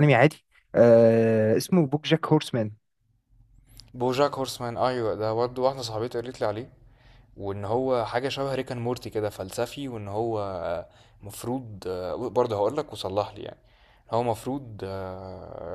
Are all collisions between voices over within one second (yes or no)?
yes